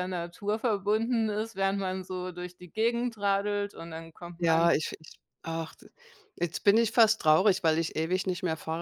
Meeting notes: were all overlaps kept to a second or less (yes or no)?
yes